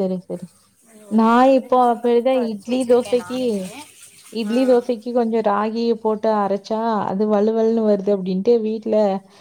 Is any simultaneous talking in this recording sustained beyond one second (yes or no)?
yes